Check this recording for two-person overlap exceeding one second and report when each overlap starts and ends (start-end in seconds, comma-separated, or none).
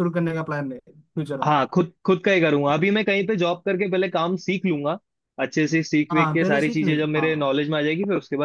6.1-7.6